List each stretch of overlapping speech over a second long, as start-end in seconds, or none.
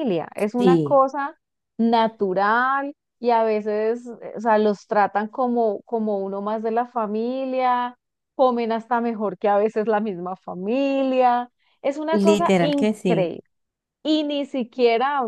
12.1-13.3